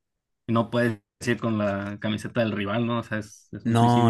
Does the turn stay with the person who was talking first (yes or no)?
no